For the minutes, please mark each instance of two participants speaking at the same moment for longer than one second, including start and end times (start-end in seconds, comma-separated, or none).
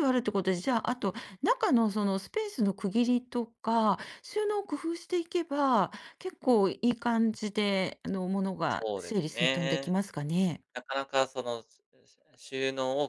8.7-9.9